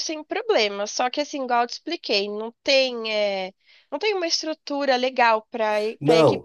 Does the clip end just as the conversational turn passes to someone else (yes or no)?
yes